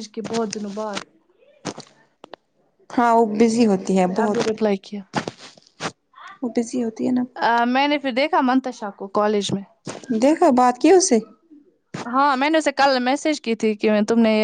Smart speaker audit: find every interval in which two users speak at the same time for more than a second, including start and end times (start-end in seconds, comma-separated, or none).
none